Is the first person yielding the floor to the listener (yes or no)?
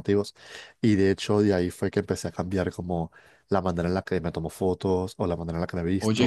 no